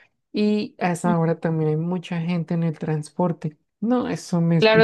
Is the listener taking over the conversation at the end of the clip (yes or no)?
yes